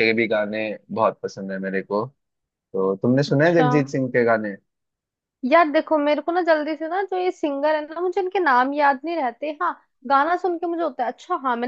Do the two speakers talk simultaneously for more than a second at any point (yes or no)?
no